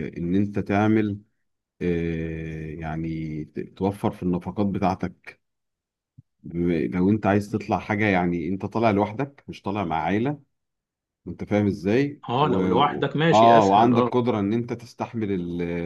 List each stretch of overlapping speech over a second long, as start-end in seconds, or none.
12.3-14.1